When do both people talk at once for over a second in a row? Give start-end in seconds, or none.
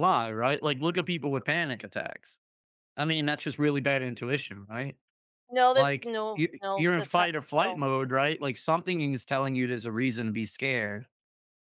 5.7-7.8